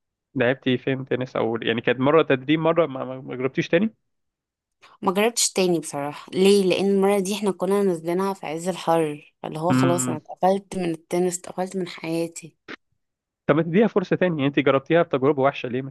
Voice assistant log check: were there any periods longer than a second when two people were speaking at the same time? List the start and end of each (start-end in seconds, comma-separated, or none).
none